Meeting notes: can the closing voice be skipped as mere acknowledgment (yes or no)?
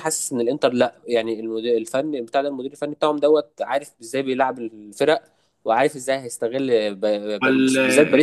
yes